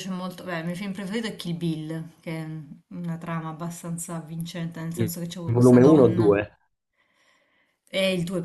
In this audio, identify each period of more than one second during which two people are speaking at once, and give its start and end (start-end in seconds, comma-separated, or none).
5.0-6.3